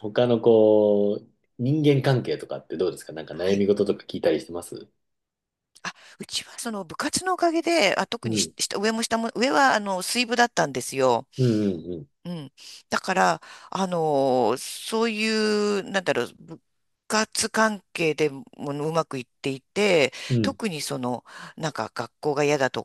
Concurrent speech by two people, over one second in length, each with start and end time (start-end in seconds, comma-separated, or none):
none